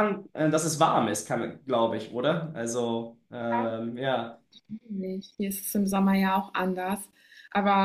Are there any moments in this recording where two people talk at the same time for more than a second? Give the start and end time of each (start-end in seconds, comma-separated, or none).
none